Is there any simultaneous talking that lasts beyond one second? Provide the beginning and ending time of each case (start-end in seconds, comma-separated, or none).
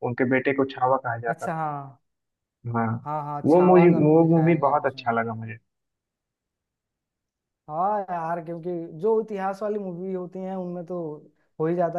3.5-5.1